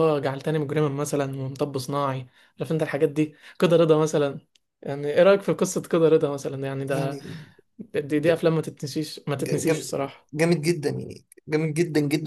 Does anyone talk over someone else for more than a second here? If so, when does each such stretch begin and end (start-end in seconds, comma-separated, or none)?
none